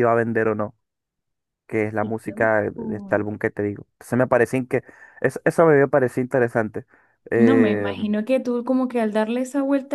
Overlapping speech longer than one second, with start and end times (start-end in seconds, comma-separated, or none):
2.0-3.2